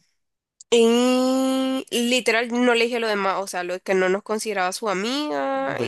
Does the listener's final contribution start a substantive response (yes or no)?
yes